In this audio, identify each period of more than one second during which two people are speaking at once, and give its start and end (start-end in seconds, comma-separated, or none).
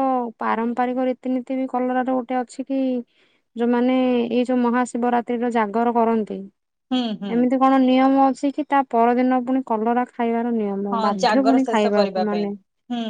10.9-12.4